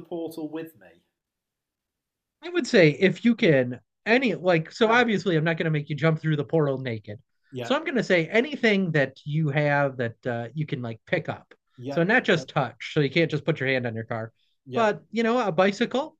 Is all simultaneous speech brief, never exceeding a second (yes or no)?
yes